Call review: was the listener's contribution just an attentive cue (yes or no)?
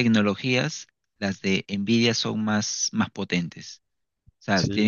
yes